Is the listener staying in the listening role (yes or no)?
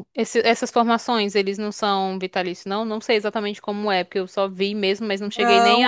no